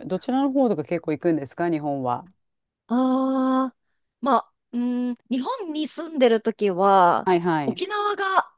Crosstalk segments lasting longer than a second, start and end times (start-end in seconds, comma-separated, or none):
none